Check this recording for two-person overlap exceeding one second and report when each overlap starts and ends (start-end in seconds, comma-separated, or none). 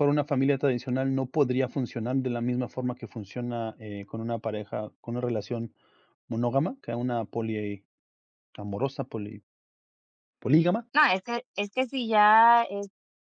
none